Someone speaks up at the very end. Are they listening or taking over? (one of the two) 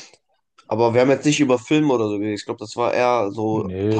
taking over